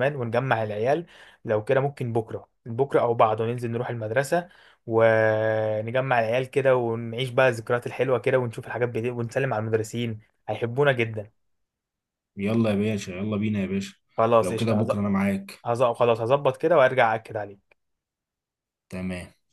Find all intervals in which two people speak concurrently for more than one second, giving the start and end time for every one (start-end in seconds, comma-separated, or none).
none